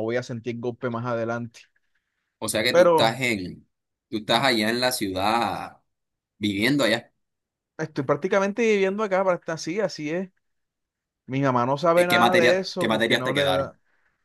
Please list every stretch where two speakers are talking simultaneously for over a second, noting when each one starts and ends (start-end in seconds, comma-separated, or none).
11.9-13.7